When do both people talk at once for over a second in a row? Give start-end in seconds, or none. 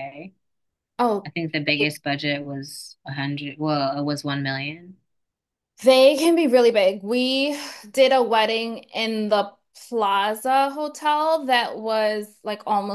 none